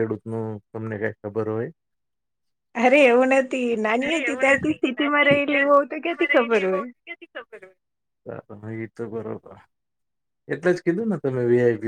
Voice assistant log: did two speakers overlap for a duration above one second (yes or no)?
yes